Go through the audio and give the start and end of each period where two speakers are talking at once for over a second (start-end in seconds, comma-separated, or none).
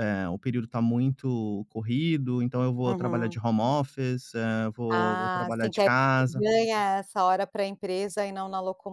4.9-6.5